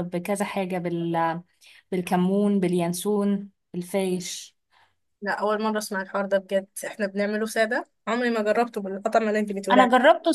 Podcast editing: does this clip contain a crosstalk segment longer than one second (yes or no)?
no